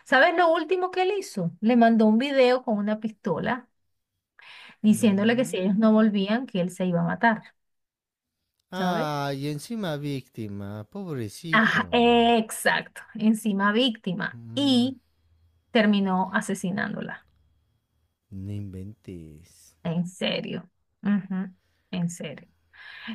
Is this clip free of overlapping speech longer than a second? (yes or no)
no